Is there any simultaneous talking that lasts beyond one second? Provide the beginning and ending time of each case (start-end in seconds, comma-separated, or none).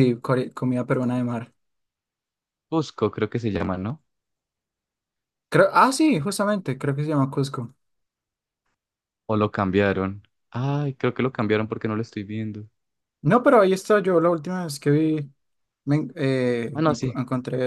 none